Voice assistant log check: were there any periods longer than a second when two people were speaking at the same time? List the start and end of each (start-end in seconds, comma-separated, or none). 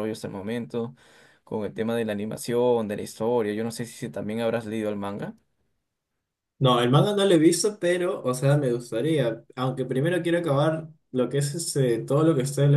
none